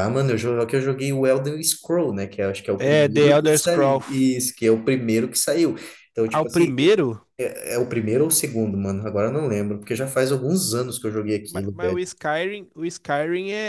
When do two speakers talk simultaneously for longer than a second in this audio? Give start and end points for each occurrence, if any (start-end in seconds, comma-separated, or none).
2.8-4.4